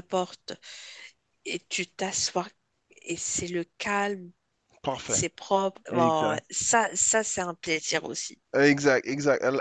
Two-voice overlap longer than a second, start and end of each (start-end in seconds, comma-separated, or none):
none